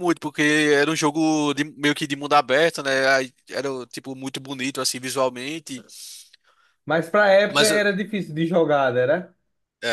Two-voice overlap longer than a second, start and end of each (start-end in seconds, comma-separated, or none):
none